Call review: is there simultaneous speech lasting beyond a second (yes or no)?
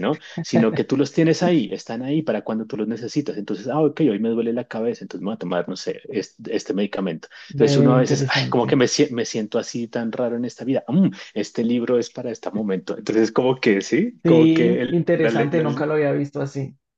yes